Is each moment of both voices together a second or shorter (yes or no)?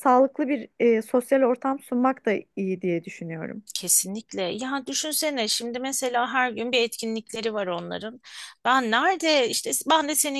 yes